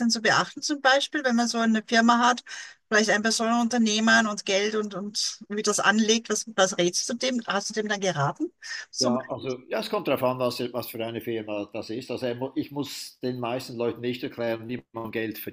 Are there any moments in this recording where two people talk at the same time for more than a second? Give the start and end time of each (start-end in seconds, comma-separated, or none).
none